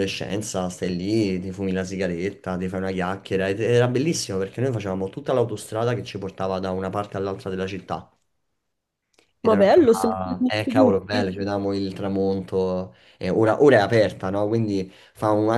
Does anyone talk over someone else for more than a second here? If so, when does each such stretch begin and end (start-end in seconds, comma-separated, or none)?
9.4-11.2